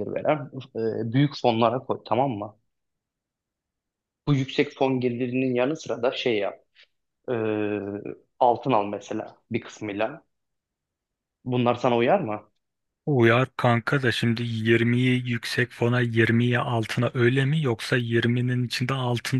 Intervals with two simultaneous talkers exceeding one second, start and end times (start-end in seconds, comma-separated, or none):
none